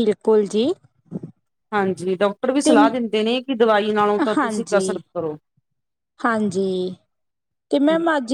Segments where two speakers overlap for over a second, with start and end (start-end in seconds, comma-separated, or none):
none